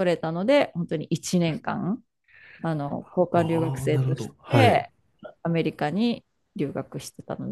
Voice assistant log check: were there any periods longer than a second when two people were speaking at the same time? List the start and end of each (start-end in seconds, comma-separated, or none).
3.3-4.9